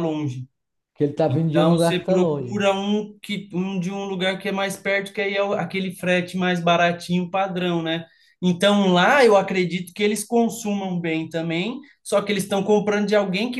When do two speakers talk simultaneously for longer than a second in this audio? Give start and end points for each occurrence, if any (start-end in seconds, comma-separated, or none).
1.3-2.6